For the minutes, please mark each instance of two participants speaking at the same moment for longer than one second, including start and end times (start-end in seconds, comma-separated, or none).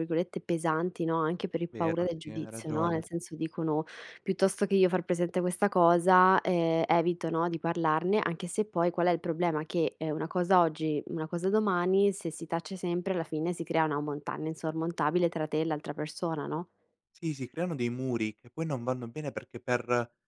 1.7-3.0